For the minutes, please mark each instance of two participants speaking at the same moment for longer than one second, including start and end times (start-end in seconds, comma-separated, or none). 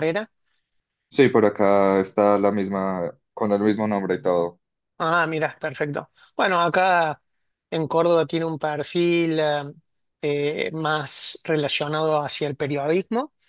none